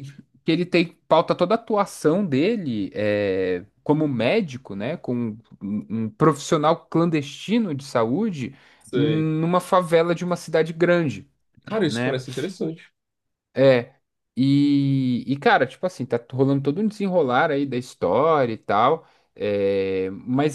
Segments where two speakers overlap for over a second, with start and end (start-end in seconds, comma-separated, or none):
none